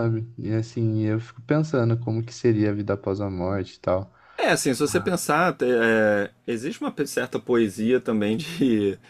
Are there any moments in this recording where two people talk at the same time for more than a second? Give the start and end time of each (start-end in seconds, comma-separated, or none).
none